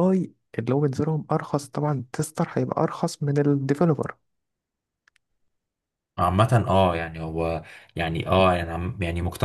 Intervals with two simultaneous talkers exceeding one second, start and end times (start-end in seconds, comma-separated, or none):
none